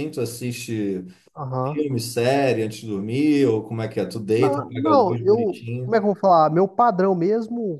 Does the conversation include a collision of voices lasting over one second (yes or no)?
yes